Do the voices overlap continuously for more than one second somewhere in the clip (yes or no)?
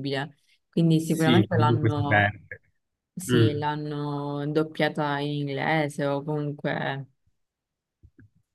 yes